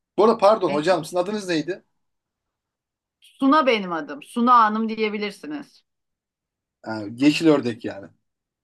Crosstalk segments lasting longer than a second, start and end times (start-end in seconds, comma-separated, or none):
none